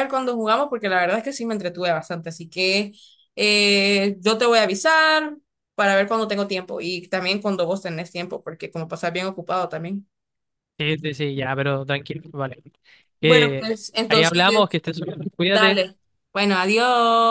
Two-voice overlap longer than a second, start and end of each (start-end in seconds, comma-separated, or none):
13.2-14.8